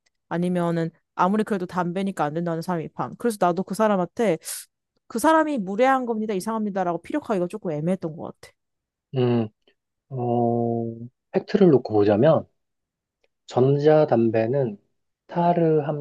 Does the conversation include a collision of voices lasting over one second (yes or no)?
no